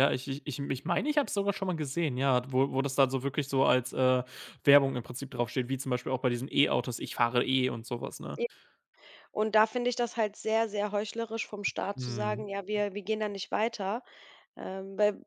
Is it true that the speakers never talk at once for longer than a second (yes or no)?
yes